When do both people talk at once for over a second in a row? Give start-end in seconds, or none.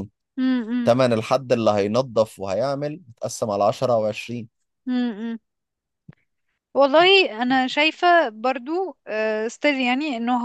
none